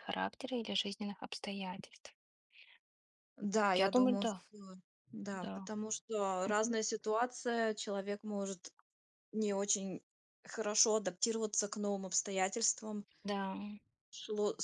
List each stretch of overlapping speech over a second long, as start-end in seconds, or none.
none